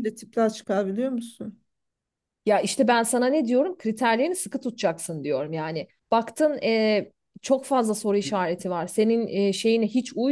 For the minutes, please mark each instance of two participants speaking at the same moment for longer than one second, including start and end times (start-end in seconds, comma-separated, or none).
none